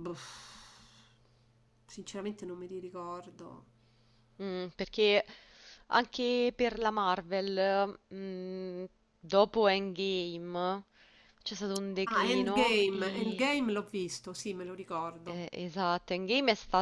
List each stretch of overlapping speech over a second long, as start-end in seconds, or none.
12.1-13.4